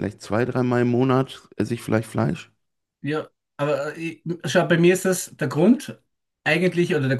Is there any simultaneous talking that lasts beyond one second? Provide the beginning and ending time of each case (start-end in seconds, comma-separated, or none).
none